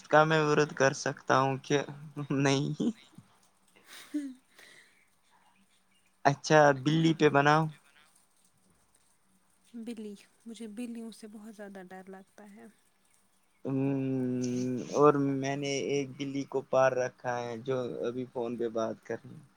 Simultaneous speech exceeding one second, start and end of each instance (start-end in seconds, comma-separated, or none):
none